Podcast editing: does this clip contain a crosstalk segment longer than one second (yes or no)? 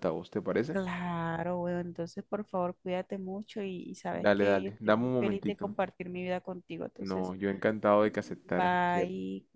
yes